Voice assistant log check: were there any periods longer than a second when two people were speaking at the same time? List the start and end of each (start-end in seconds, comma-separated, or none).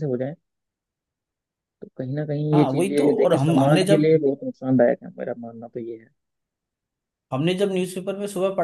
2.5-4.1